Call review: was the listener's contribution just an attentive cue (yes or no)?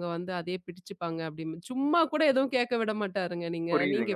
yes